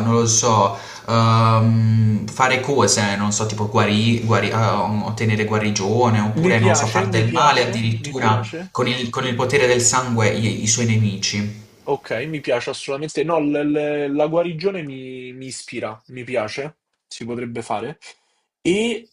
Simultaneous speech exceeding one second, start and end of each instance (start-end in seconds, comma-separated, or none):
6.4-8.7